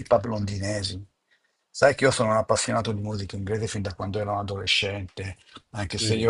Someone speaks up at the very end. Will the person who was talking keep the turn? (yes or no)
yes